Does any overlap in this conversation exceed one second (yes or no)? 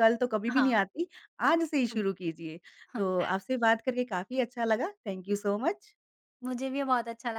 no